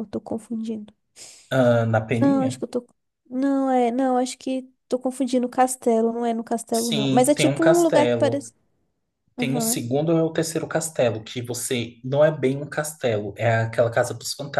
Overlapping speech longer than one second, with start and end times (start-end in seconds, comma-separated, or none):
6.7-8.4